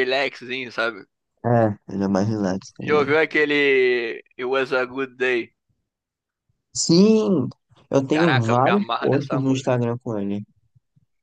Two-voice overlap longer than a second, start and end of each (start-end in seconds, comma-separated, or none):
8.1-9.8